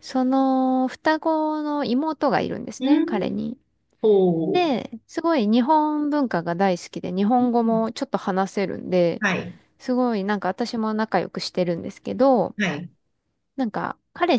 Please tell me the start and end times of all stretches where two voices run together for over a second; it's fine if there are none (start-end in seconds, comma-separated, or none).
none